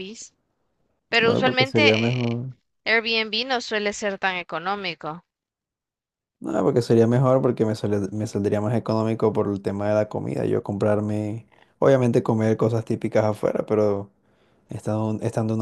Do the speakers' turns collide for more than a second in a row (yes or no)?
yes